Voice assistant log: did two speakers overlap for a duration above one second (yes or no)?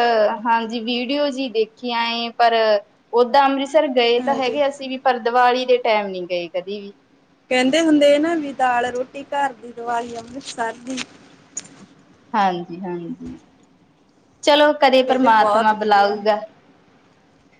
no